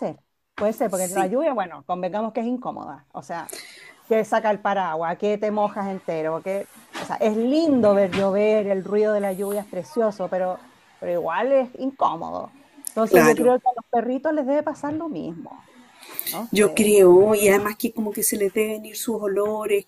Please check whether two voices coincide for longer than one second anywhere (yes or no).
no